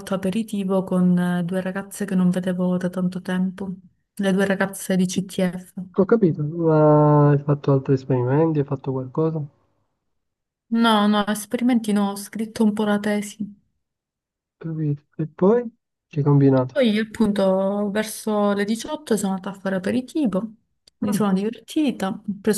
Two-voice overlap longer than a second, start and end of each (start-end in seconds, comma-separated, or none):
none